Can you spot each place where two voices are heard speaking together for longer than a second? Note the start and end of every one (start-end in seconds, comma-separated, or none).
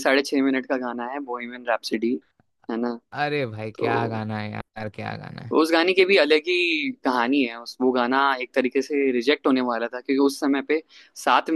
none